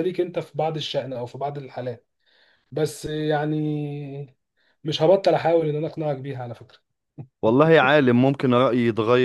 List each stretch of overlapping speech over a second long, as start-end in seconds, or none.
none